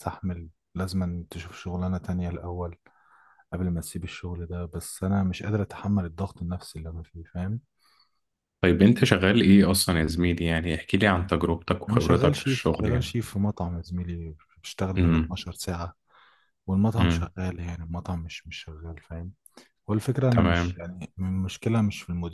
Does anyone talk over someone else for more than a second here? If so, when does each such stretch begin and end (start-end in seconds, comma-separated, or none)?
11.9-13.2